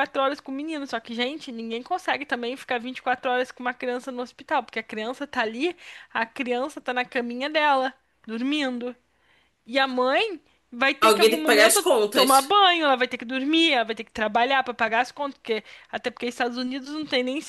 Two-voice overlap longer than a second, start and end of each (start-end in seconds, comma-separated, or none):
11.0-12.5